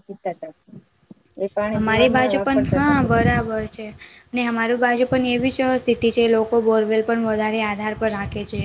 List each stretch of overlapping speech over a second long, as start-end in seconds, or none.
1.8-3.2